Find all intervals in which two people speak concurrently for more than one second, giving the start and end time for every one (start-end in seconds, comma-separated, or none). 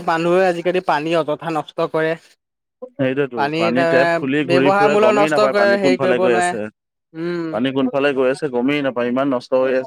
3.9-6.5